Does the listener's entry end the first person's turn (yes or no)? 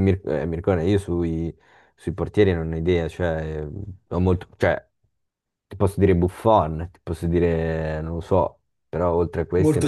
yes